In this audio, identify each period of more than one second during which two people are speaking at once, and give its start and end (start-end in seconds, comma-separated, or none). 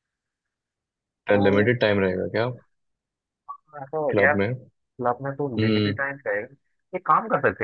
none